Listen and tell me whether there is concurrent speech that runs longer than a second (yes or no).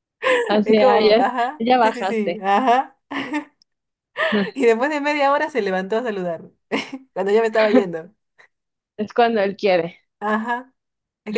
yes